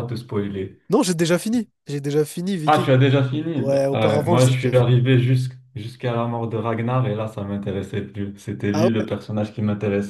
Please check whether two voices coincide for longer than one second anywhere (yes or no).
yes